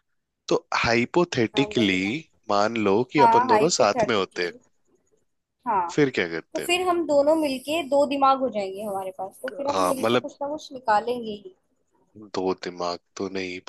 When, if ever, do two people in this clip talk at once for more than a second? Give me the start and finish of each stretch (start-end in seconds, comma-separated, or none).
3.2-4.5